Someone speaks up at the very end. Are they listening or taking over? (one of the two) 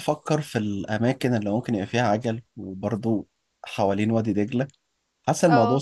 listening